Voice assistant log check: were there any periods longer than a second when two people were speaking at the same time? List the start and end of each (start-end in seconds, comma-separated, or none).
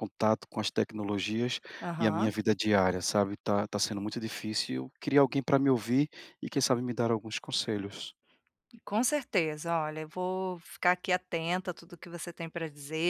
none